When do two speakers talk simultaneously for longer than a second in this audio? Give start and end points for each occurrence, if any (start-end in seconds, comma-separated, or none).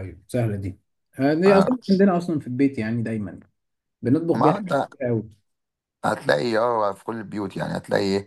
none